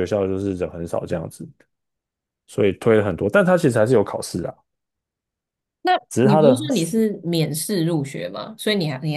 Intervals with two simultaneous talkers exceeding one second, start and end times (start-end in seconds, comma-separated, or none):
none